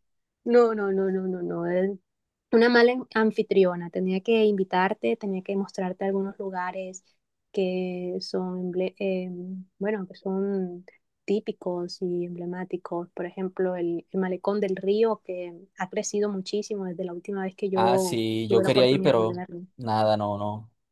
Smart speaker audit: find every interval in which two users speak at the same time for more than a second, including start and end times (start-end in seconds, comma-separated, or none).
17.7-19.6